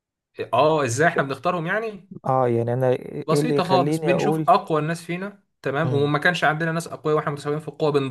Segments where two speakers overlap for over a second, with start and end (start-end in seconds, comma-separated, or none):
3.3-4.5